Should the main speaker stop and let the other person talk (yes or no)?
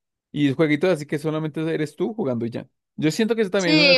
yes